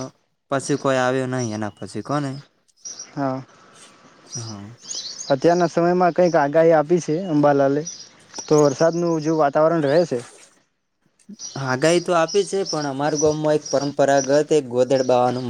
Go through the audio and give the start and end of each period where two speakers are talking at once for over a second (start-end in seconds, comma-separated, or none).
none